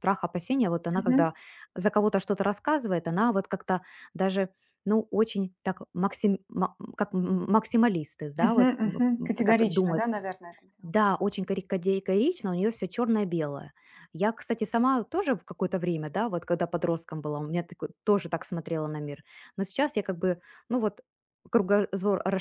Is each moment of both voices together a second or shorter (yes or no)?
no